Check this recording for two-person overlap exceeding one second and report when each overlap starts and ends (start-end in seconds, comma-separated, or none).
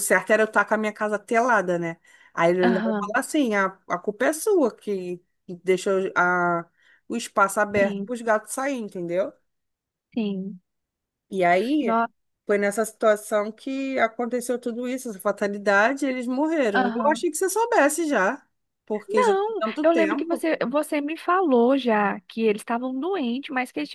19.1-20.5